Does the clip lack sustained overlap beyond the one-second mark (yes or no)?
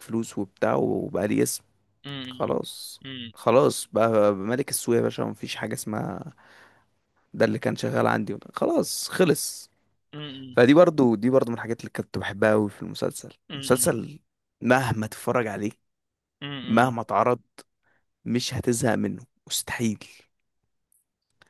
yes